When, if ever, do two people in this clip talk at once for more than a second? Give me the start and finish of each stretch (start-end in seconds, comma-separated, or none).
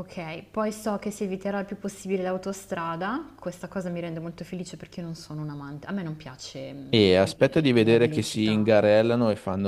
6.9-8.7